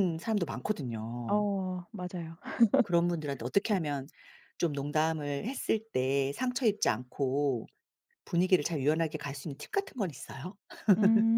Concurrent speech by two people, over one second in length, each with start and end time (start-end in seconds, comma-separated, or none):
none